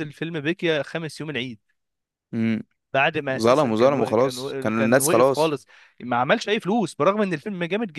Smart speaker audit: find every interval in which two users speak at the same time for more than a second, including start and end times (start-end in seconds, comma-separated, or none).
3.4-5.6